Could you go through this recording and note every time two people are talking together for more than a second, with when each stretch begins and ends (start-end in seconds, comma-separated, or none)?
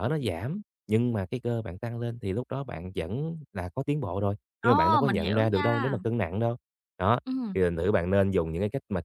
4.6-6.0